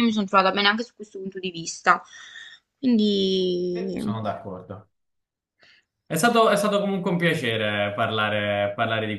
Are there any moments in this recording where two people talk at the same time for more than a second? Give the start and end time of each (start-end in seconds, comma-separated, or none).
none